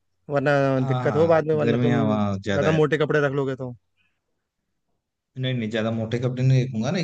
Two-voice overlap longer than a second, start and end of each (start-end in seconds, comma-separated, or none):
0.9-2.8